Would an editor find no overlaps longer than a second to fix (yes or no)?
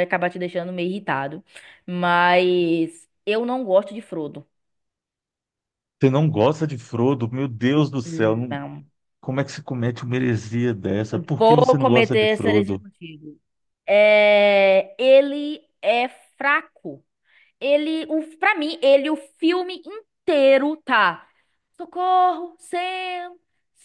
no